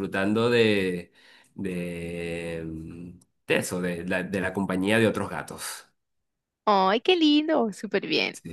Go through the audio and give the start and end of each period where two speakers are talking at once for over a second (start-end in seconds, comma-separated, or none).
none